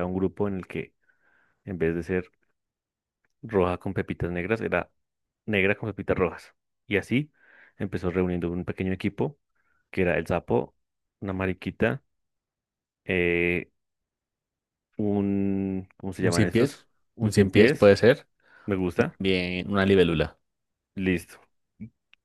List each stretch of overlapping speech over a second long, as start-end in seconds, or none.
16.2-17.9